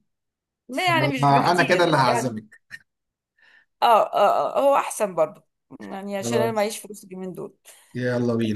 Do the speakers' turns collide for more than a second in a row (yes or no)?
yes